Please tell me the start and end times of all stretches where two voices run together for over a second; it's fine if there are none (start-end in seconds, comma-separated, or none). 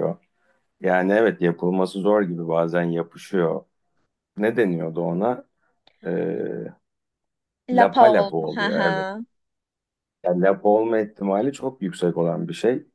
7.7-9.1